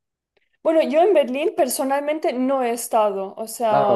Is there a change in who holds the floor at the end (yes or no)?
no